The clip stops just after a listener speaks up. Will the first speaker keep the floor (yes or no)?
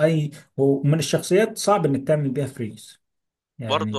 no